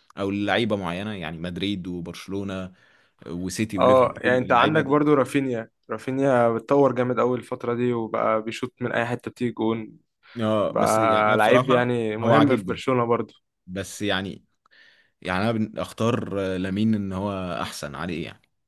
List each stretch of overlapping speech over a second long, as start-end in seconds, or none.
3.8-5.0, 10.7-12.8